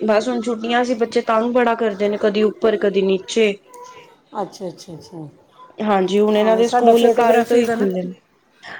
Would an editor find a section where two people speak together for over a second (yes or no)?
yes